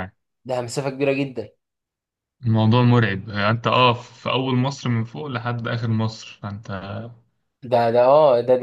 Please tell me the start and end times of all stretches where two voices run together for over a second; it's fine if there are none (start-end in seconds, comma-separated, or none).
none